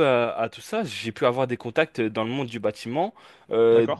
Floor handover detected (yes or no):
no